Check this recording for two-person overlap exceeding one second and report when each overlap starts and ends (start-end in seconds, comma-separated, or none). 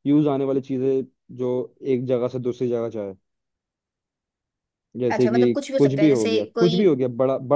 5.1-6.8